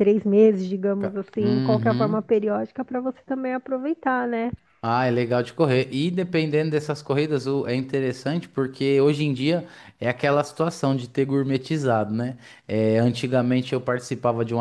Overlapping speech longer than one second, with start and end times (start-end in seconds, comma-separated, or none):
1.0-2.3